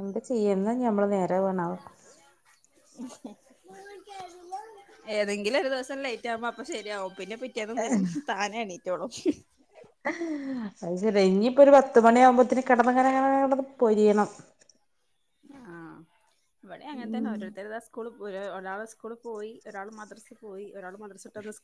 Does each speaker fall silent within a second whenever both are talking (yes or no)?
yes